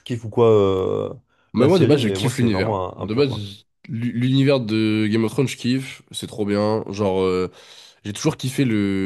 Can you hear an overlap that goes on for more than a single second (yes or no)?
yes